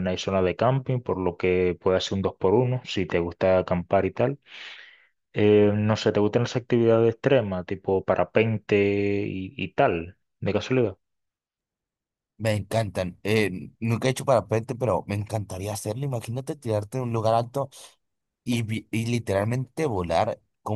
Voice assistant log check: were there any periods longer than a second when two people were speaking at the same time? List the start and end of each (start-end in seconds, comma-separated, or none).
none